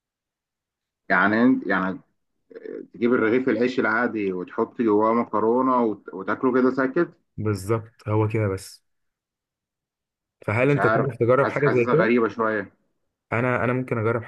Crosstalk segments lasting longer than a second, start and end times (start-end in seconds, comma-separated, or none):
10.6-12.1